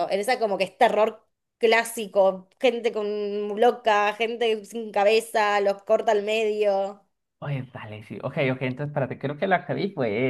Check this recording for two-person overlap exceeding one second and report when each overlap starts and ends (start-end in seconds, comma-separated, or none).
none